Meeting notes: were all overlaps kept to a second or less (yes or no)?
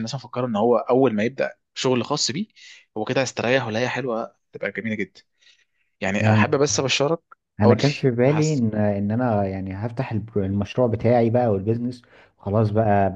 yes